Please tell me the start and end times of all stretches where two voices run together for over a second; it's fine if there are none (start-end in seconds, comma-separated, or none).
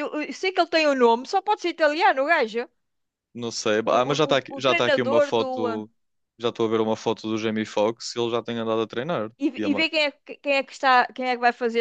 3.8-5.9